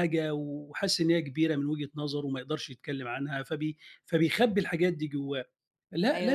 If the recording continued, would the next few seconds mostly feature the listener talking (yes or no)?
no